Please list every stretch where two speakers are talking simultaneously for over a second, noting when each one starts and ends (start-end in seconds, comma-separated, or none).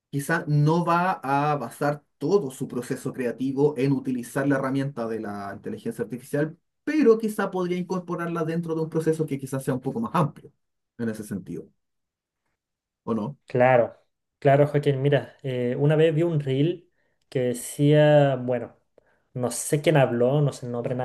none